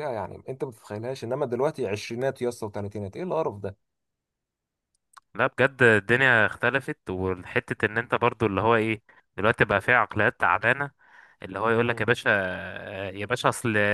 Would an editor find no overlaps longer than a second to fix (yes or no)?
yes